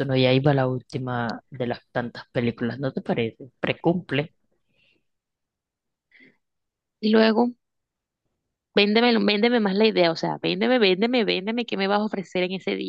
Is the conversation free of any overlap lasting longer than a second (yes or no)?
yes